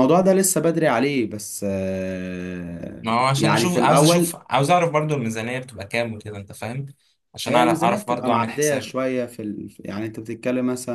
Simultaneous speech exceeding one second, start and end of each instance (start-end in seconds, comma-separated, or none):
3.0-4.4, 7.5-8.9